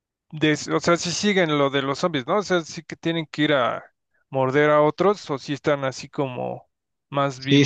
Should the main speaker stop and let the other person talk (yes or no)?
yes